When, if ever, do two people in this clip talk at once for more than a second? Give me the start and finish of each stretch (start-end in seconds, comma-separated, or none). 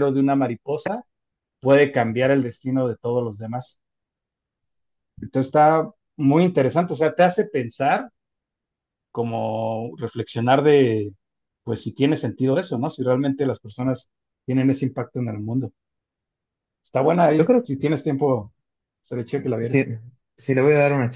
none